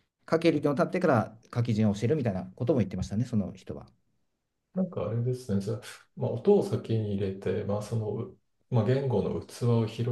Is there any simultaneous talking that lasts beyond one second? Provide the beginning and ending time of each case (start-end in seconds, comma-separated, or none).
none